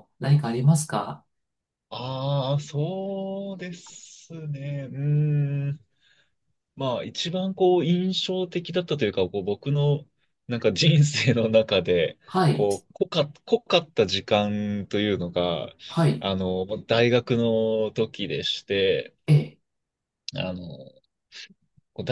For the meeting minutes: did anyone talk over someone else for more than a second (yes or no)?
no